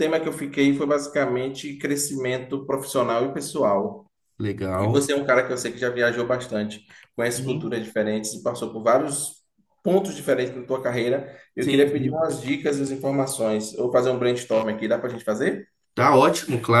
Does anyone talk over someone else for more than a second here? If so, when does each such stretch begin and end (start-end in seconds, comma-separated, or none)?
none